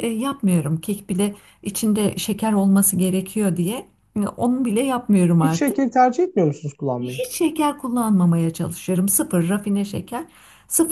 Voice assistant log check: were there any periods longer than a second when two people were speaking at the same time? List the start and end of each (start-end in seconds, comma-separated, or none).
none